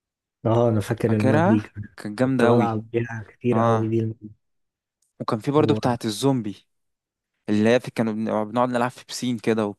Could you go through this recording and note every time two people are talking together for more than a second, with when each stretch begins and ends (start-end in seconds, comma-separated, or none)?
1.1-2.8